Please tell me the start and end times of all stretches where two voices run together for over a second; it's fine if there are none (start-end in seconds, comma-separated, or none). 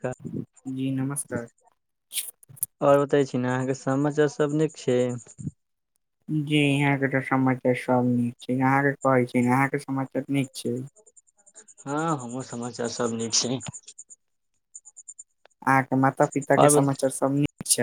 none